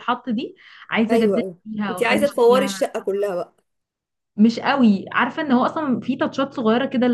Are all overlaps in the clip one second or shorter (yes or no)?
no